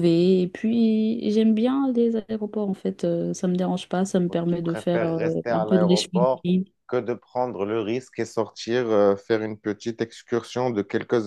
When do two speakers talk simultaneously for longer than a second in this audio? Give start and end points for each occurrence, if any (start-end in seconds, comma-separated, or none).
4.3-6.4